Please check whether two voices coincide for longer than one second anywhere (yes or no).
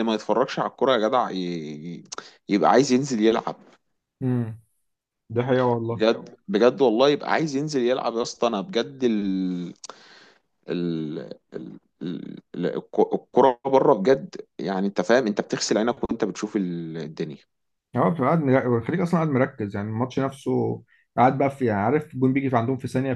no